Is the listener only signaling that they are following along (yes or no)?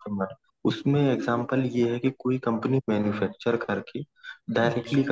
yes